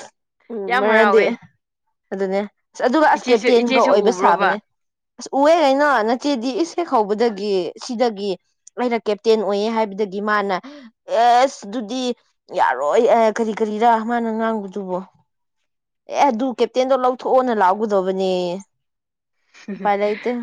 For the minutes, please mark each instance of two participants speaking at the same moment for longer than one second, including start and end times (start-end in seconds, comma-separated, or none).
3.1-4.5